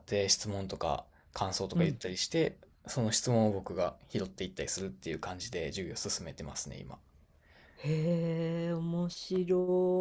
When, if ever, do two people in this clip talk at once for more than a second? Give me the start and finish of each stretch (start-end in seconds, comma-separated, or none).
none